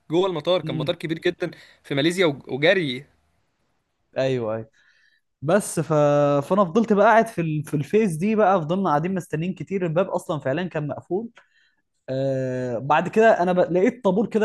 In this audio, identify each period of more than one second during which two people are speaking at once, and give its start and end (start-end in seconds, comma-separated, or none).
none